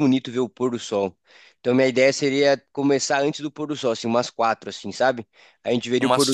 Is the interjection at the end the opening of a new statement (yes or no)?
no